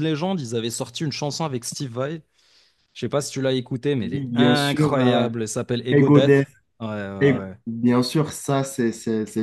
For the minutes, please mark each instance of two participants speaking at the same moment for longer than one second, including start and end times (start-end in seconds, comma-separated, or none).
4.0-5.3